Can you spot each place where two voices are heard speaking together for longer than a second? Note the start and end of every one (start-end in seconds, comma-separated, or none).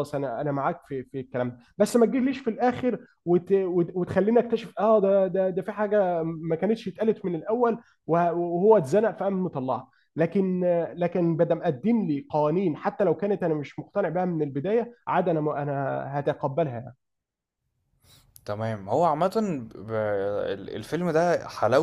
none